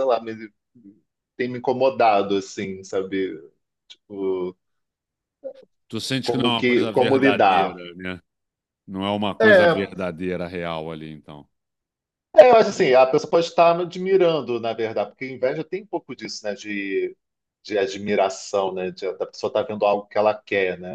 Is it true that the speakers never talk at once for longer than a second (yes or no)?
no